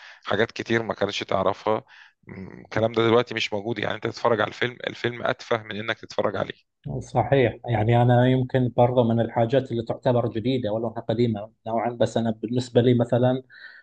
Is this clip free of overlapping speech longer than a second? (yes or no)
yes